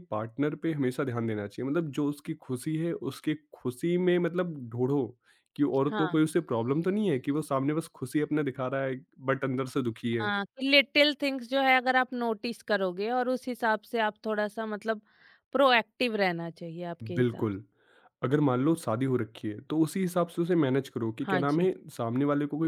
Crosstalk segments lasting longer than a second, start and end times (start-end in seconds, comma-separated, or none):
none